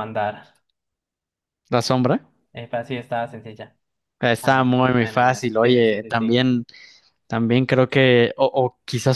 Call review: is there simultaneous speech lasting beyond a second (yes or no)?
yes